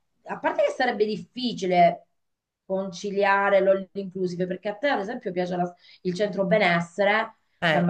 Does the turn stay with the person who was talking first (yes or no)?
yes